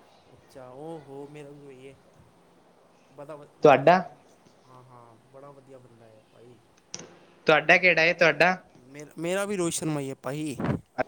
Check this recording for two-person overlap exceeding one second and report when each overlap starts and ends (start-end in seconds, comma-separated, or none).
none